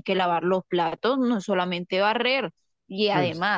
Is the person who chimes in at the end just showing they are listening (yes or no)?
yes